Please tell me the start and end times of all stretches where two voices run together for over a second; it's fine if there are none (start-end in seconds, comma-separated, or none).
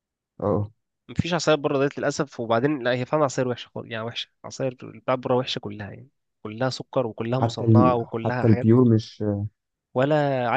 7.4-8.7